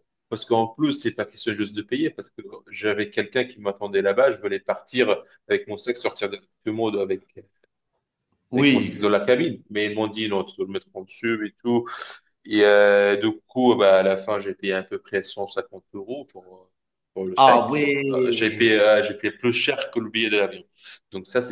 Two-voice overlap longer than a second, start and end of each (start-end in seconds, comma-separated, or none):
17.4-18.8